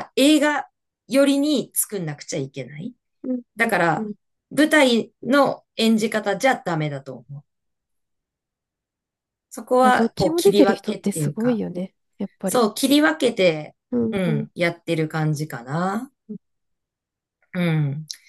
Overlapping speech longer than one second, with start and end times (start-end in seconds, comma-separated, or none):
9.8-11.6